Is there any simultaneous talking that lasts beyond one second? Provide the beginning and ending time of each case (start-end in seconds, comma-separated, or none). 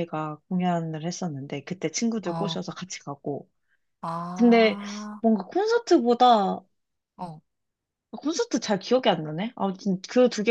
none